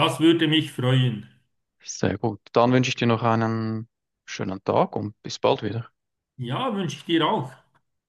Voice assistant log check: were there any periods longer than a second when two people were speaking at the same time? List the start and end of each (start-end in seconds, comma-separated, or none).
none